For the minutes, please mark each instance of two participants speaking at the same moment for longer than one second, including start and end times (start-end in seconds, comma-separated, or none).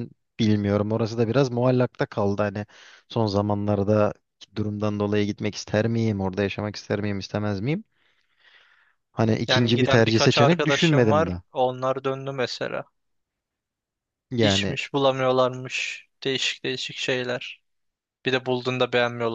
9.5-11.4